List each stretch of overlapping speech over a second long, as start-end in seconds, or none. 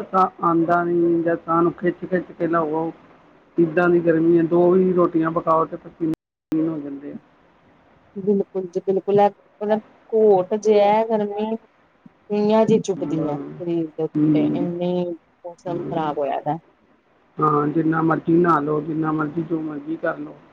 none